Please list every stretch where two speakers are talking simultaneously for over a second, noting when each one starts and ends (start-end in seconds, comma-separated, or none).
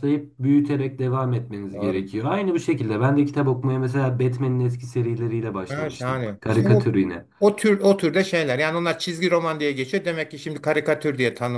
5.7-7.0